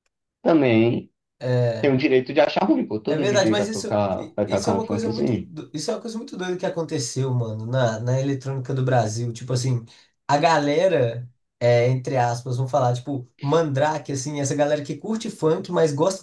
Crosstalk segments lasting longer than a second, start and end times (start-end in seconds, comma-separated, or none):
3.1-5.5